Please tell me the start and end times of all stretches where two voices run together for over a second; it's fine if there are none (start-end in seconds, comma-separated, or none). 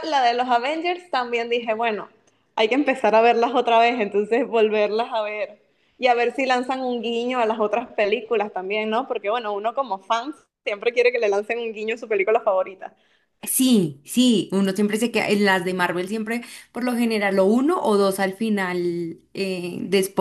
none